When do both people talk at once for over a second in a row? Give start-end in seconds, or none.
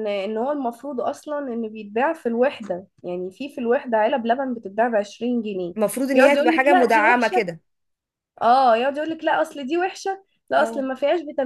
6.1-7.5